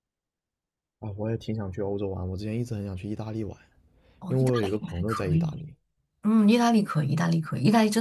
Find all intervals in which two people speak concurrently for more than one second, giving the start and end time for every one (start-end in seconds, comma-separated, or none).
4.3-5.6